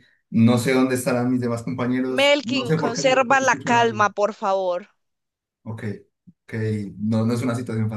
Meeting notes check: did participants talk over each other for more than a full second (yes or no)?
yes